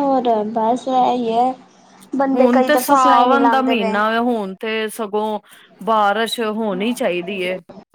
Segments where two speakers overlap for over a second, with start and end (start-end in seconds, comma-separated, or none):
2.3-4.0